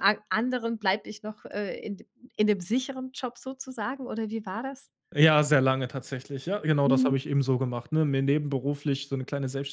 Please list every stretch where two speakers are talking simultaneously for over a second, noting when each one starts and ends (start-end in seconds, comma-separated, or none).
none